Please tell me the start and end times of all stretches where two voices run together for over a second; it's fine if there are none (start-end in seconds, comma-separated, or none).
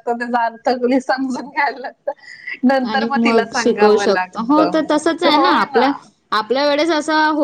none